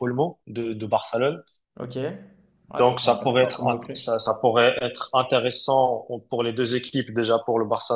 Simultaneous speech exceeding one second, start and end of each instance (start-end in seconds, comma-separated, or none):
2.8-4.0